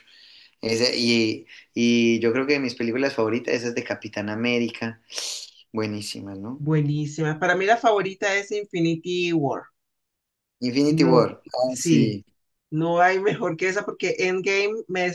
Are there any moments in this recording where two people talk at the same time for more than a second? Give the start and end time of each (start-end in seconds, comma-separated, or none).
10.9-12.2